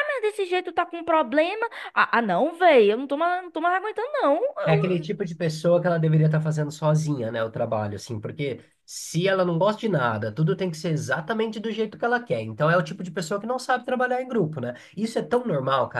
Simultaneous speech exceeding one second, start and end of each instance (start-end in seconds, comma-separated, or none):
none